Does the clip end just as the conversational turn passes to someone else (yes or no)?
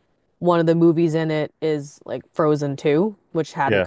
no